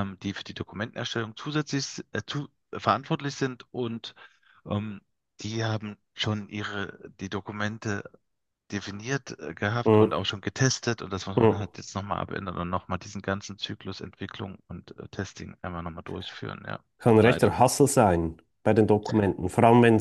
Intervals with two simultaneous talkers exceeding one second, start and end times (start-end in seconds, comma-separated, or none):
none